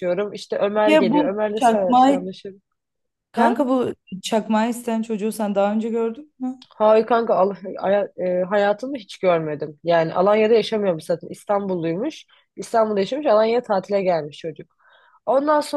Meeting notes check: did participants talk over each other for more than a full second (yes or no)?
yes